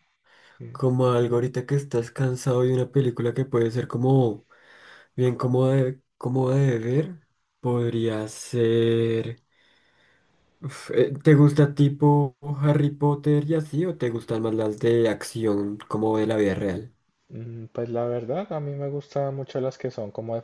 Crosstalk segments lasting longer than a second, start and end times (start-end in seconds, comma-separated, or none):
none